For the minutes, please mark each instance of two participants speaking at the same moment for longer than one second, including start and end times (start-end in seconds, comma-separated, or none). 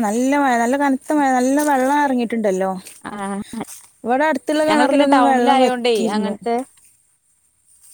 4.7-6.3